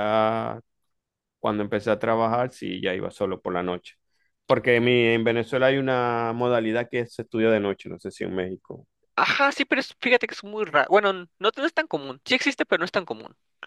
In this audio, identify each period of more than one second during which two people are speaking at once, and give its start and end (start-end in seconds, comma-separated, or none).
none